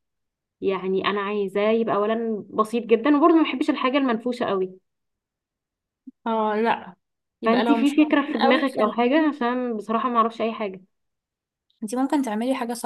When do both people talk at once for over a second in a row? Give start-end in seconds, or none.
7.5-8.9